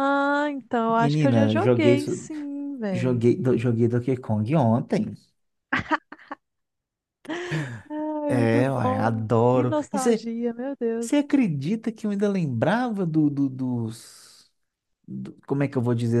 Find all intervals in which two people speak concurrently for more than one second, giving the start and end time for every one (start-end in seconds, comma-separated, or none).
0.9-2.3, 8.3-10.3